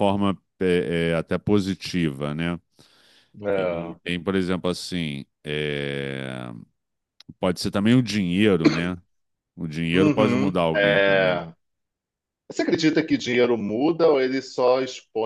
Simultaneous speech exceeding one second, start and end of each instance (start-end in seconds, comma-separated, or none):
9.9-11.4